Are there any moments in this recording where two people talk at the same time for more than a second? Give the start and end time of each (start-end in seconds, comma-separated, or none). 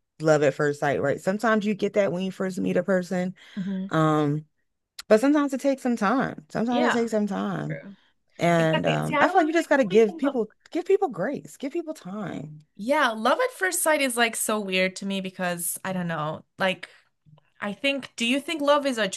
8.6-10.3